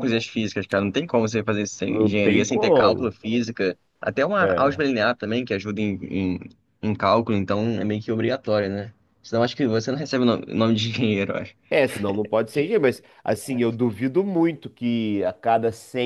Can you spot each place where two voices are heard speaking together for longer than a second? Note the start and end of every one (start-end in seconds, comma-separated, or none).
1.9-3.1